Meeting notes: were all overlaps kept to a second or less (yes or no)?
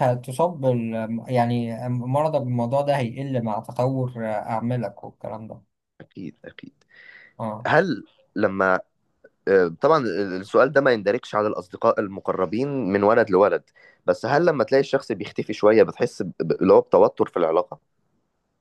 yes